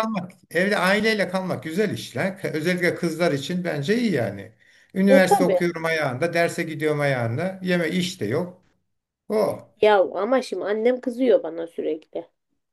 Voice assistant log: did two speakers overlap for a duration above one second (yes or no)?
no